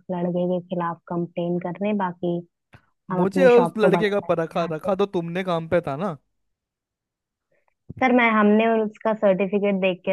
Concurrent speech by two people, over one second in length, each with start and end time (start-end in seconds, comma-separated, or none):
3.2-4.9